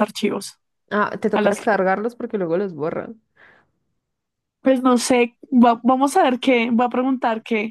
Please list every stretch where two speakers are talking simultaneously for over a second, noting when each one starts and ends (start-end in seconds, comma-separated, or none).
none